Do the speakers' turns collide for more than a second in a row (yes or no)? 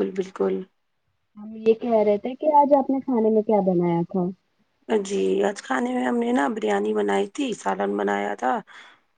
no